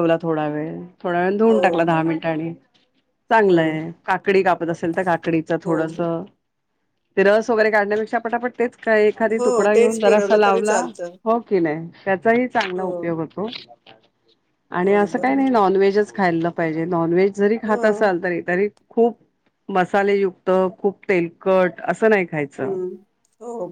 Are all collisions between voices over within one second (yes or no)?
no